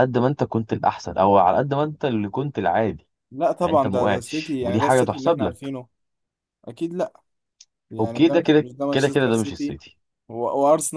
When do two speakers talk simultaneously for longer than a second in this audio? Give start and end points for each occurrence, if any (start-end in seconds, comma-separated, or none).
3.6-5.7, 8.0-9.8